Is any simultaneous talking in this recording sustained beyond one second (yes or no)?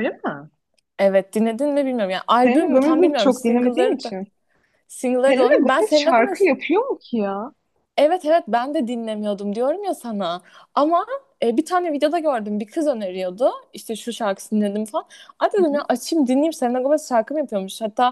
yes